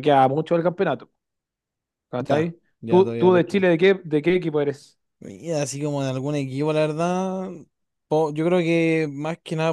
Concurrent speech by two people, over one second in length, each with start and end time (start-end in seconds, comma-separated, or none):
2.2-3.7